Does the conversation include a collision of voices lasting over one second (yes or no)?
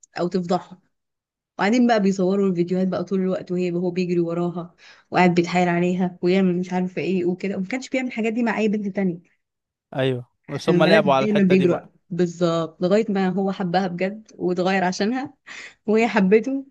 yes